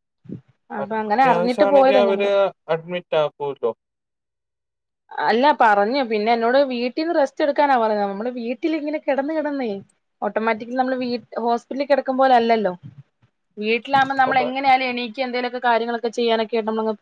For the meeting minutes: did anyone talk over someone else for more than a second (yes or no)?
yes